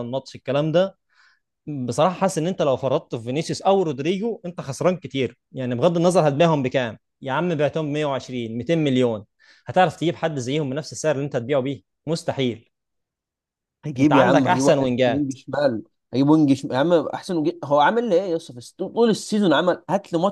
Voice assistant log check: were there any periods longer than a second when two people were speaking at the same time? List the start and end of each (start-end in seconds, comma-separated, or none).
14.0-15.3